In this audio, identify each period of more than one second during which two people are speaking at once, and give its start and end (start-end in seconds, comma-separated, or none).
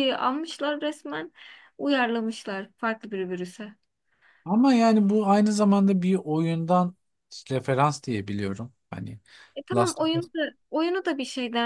none